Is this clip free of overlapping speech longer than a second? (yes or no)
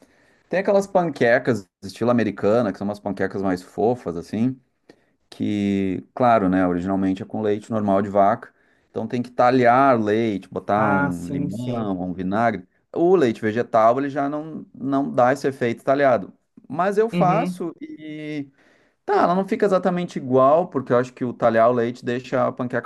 no